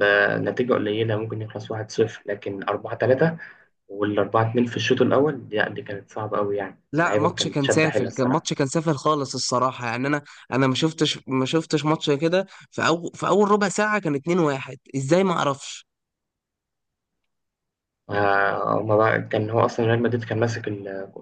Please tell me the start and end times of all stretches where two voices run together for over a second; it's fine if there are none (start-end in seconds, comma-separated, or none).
6.9-8.5